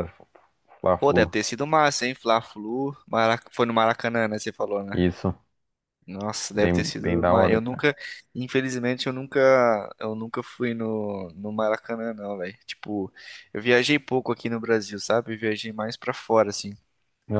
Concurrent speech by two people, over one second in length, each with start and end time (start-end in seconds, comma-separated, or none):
6.5-7.8